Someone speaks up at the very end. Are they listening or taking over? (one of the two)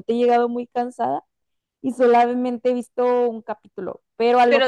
taking over